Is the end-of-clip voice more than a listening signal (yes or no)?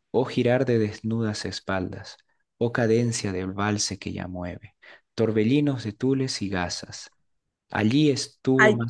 no